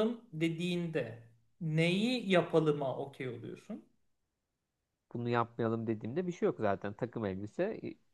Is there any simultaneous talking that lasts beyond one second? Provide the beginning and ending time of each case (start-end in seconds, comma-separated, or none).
none